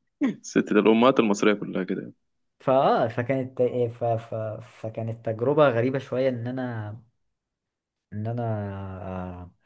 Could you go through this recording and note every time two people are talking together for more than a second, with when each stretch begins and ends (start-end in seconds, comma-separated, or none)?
none